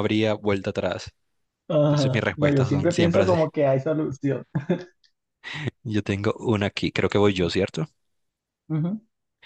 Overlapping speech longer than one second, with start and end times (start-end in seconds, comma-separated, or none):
1.8-3.4